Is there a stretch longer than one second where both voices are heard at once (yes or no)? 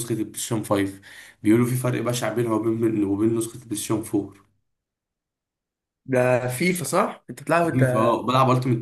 no